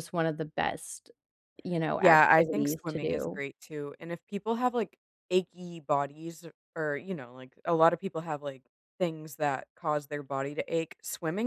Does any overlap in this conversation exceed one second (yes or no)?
yes